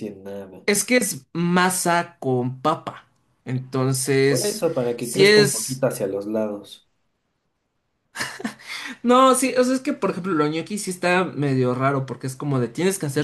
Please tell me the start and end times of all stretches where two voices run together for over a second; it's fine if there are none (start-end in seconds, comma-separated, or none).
4.3-5.8